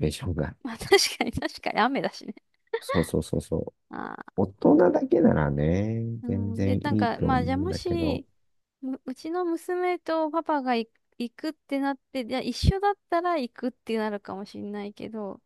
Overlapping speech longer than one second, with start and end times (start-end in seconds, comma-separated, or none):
6.2-8.2